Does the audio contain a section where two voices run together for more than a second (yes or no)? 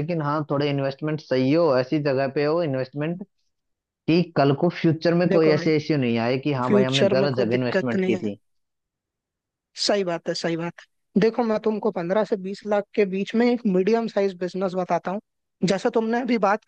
yes